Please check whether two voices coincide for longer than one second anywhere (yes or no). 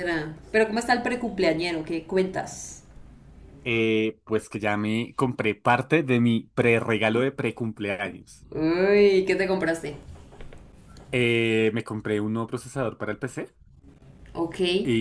no